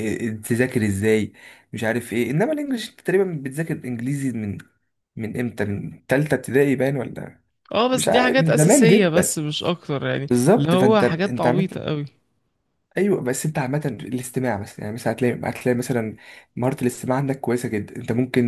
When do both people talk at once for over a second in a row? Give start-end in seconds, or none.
7.9-9.4, 10.3-11.8